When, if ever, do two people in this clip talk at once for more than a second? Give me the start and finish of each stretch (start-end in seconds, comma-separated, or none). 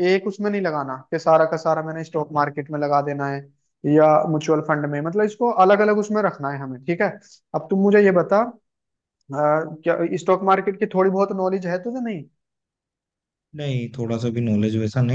none